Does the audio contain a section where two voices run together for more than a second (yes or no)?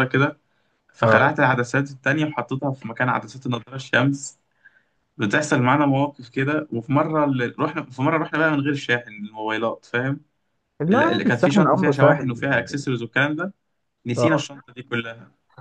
yes